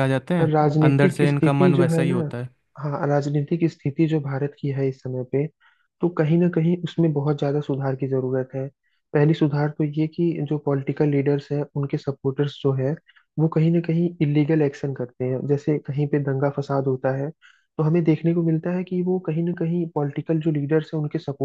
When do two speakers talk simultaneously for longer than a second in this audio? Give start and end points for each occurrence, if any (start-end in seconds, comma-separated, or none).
0.5-2.3